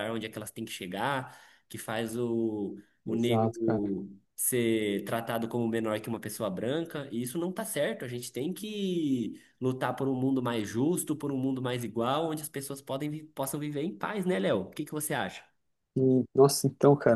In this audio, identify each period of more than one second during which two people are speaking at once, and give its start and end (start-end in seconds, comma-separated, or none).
none